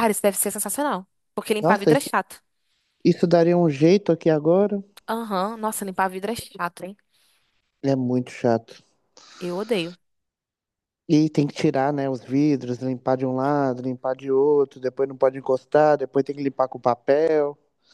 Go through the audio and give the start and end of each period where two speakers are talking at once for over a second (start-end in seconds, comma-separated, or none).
none